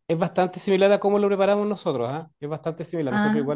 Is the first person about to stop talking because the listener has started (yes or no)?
no